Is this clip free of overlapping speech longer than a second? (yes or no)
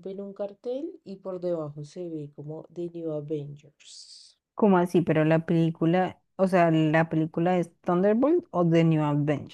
yes